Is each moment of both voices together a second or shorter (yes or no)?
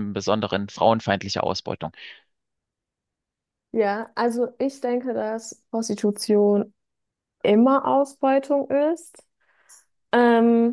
yes